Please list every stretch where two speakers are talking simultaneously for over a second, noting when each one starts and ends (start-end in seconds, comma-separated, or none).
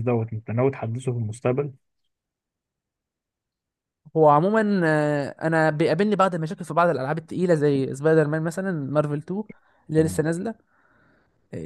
none